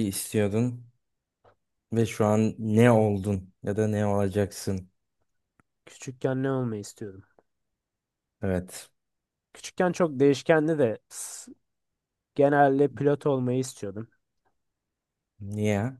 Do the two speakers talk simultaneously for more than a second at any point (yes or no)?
no